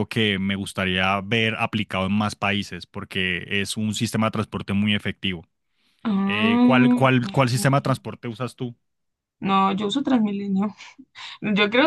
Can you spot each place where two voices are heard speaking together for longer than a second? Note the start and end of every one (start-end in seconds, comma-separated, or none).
6.2-8.0